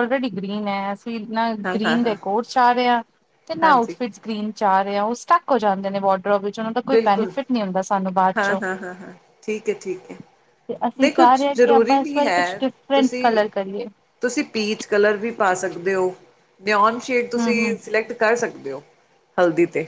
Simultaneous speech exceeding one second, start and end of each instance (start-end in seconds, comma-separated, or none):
11.0-13.2